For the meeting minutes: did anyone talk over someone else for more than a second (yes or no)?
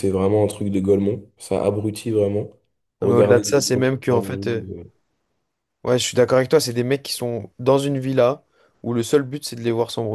yes